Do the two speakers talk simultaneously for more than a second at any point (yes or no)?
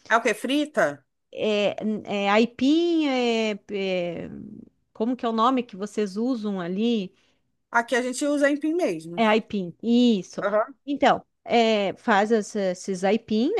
no